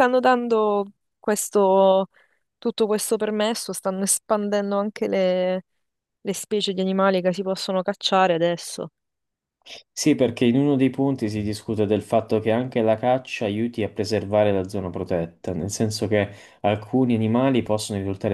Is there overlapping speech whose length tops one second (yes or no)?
no